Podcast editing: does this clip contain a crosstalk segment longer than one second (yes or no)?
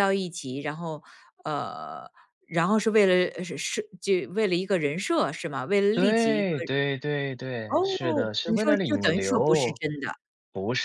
yes